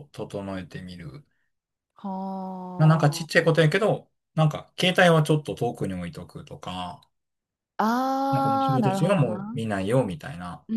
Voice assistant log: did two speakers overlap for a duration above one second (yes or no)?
yes